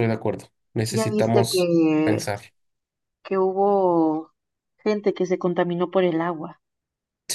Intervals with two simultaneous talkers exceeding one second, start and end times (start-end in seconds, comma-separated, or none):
0.9-2.3